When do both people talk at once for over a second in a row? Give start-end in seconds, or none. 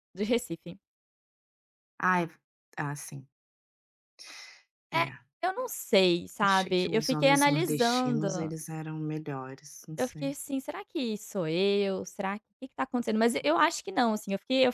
6.4-8.5